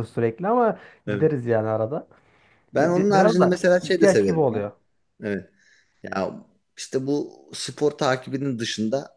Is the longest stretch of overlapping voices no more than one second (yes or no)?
no